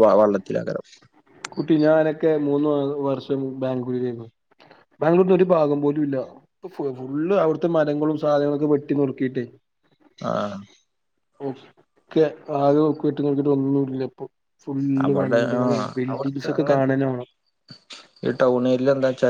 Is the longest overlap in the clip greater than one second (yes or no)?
yes